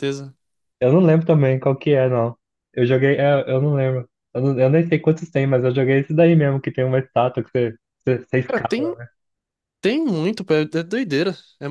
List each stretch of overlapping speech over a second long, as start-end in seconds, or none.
none